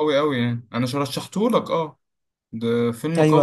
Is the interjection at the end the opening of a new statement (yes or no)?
yes